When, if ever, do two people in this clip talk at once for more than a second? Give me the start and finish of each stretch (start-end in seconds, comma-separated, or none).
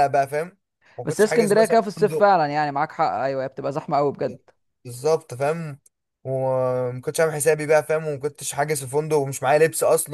1.1-2.3